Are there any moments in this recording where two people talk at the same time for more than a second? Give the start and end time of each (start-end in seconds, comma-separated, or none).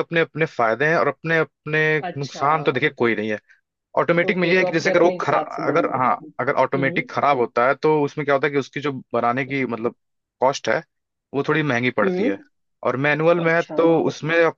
4.3-5.9